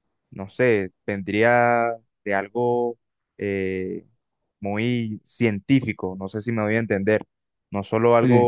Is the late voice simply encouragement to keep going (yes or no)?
yes